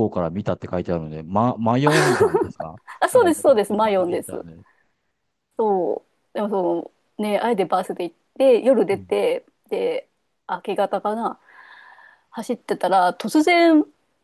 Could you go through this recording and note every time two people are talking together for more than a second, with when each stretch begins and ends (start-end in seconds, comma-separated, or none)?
3.0-4.4